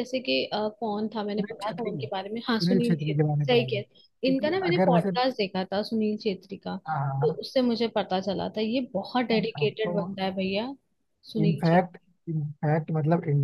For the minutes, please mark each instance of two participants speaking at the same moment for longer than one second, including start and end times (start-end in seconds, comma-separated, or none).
1.4-5.1